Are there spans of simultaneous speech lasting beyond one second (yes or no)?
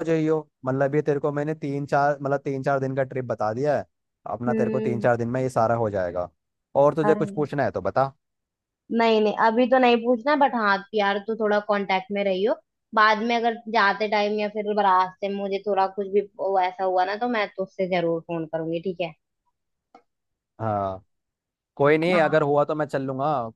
no